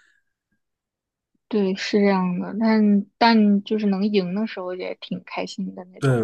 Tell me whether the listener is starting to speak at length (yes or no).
yes